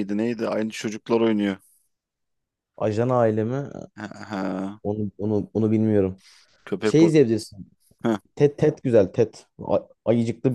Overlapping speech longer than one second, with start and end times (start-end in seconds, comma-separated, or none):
none